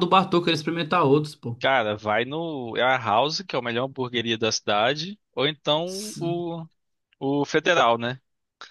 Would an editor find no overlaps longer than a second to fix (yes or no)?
yes